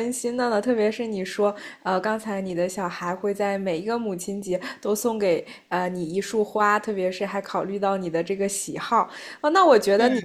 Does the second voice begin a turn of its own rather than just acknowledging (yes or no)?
no